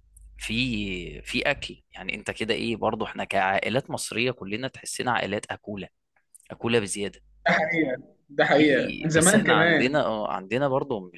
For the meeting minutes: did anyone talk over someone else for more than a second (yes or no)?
yes